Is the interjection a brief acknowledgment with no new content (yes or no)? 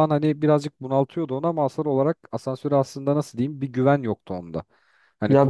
no